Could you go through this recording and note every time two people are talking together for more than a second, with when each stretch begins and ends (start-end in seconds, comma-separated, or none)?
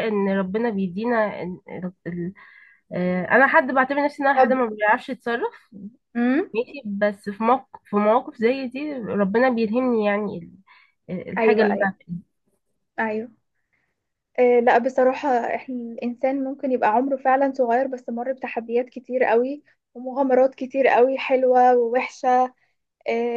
none